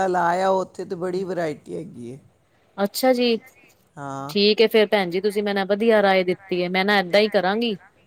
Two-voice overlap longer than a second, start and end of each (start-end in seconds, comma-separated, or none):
none